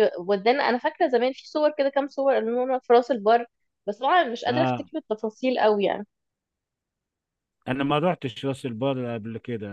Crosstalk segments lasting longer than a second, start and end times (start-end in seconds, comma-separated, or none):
none